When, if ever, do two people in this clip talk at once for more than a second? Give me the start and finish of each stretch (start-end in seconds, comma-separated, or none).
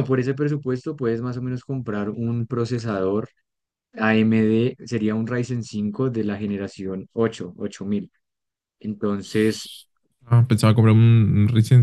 none